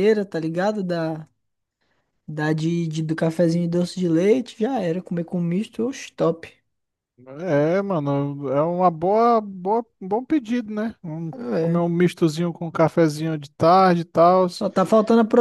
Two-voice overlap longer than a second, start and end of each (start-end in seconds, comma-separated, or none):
none